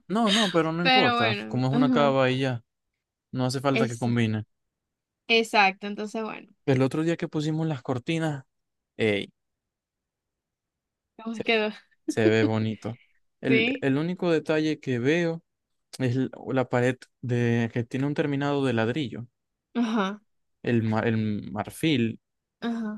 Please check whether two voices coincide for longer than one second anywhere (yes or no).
yes